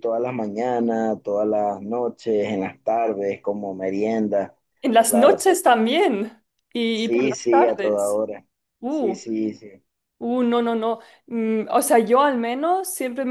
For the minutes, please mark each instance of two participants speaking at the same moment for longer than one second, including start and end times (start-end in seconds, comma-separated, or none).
6.9-8.2